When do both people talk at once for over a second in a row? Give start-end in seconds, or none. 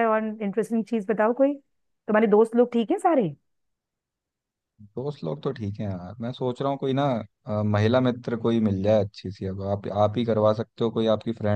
none